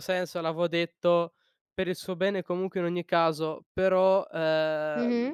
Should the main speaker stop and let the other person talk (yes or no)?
no